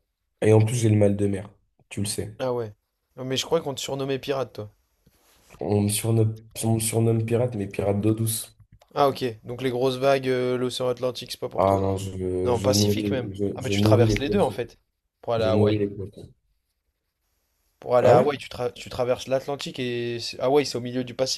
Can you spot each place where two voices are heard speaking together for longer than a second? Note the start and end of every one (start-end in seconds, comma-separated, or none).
12.5-14.6